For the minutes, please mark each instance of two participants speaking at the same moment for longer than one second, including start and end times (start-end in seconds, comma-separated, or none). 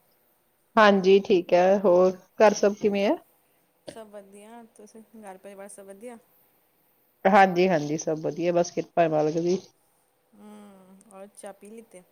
none